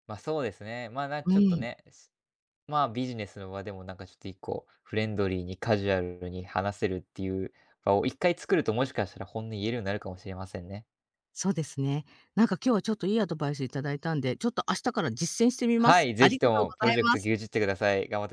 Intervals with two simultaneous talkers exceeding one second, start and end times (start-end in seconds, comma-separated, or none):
15.8-17.3